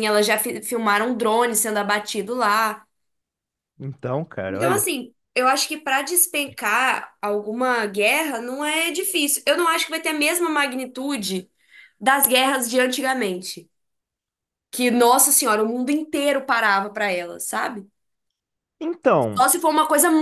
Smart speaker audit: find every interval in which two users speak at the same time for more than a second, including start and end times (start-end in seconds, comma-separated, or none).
none